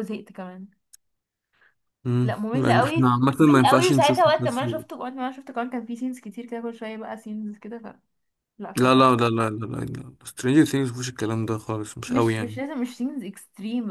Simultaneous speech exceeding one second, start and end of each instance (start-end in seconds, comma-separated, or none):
2.2-4.8